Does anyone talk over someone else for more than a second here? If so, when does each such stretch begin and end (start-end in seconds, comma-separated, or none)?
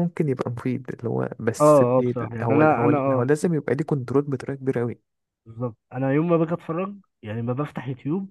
1.6-3.2